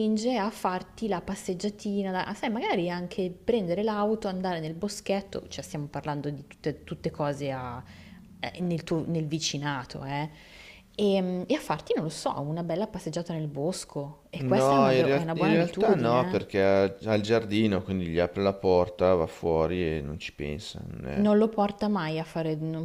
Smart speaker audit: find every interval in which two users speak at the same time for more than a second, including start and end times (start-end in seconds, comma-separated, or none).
14.6-16.7